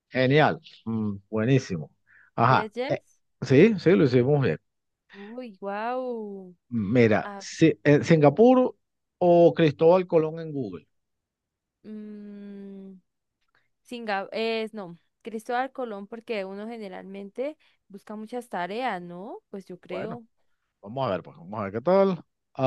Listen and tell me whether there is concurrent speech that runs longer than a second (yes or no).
no